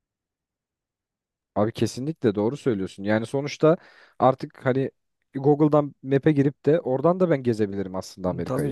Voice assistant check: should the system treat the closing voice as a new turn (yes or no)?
no